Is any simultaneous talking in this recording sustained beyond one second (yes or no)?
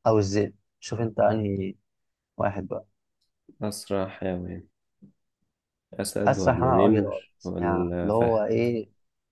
yes